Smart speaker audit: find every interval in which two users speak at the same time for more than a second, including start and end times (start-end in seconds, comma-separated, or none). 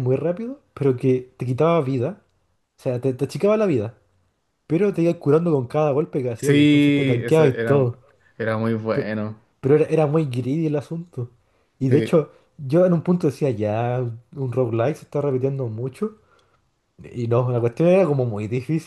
6.4-7.9